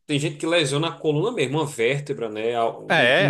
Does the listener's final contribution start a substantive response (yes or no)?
yes